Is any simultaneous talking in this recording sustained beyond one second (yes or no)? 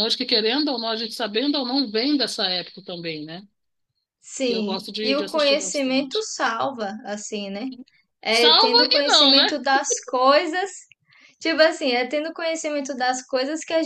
yes